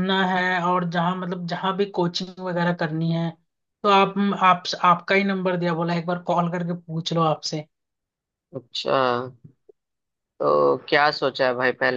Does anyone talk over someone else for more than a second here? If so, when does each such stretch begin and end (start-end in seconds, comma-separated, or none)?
none